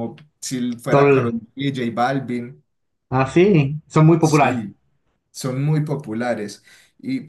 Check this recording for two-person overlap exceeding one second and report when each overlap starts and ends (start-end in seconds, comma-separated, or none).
none